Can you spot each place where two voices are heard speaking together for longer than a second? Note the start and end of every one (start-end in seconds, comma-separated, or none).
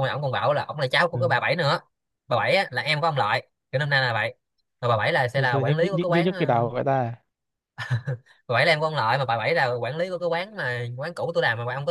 5.3-6.7